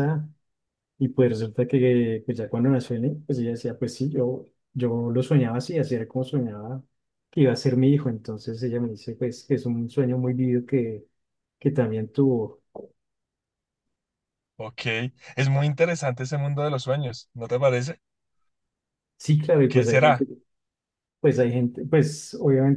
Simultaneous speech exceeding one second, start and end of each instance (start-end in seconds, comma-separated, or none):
none